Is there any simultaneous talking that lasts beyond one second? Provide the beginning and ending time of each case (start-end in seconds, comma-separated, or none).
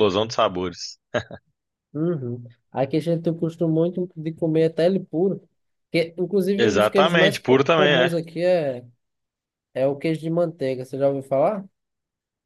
6.6-8.2